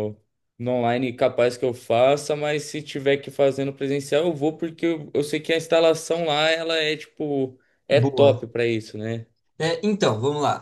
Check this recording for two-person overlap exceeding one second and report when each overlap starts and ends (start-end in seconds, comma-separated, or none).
none